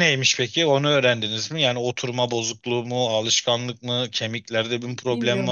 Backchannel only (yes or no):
no